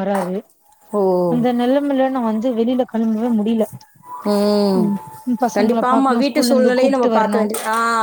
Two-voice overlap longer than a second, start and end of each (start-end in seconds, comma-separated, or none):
5.6-7.4